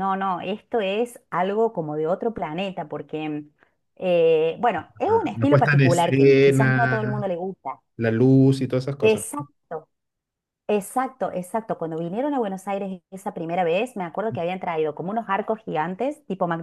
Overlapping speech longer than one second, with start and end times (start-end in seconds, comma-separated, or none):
5.1-7.3